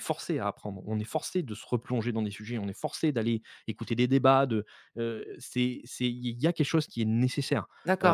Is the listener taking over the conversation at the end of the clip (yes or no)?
yes